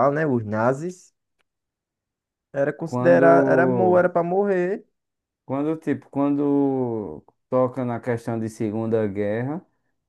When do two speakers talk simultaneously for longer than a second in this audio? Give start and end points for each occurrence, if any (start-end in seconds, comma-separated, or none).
2.8-4.1